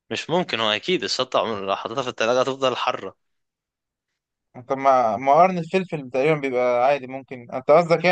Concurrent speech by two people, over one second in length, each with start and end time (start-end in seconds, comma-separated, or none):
none